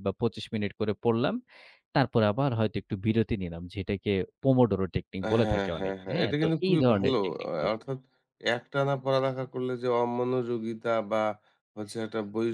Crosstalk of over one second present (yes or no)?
yes